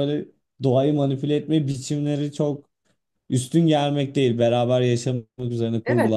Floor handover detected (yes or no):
yes